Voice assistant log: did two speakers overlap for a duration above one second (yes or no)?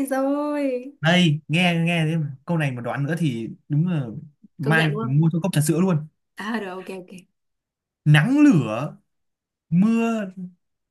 no